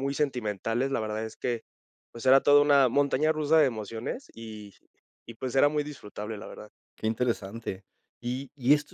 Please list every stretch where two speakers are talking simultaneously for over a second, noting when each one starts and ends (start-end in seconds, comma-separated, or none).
none